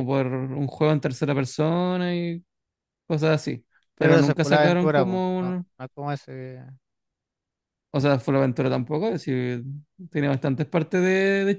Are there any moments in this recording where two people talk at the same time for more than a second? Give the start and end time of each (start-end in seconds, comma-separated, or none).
4.0-5.7